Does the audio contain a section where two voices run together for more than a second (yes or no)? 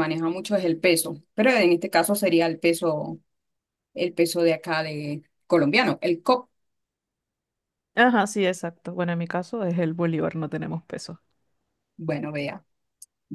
no